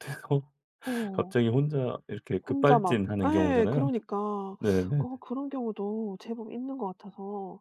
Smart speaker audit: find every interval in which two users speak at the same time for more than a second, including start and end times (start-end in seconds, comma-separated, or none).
2.5-3.9